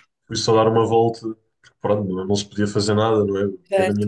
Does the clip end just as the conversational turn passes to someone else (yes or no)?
no